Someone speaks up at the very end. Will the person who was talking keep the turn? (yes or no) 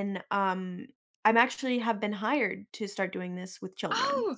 no